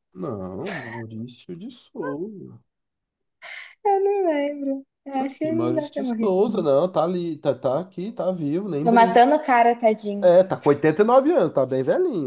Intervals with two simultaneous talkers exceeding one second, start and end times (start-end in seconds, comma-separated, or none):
5.1-6.7